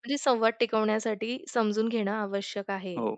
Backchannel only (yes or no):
yes